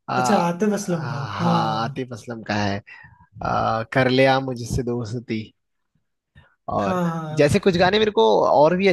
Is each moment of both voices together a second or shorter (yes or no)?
no